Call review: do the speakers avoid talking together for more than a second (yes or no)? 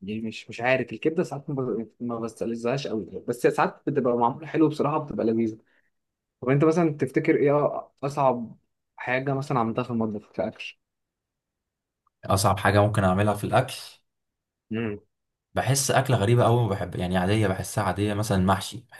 yes